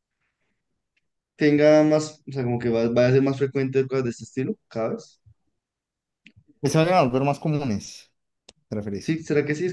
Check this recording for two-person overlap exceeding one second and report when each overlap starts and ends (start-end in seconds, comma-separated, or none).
none